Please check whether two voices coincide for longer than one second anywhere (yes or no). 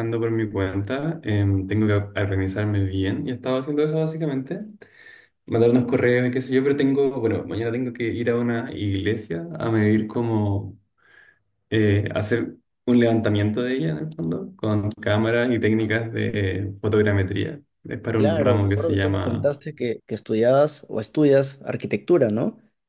yes